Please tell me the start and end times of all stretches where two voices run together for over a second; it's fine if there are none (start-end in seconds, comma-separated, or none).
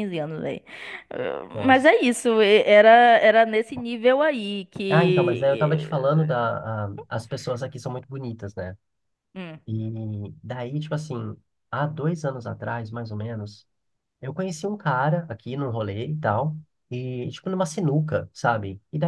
4.9-6.3